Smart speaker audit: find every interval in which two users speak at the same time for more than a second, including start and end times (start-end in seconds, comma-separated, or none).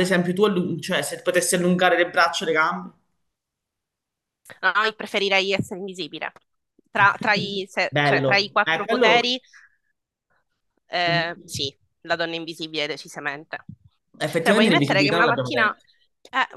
7.9-9.4, 14.4-15.8